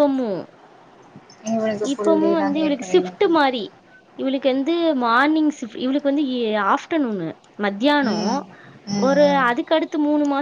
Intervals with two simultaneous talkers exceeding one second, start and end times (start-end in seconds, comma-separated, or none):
1.9-3.3